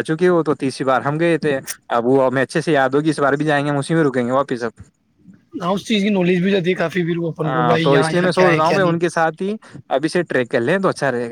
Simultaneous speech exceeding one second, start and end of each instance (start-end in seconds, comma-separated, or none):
7.4-9.0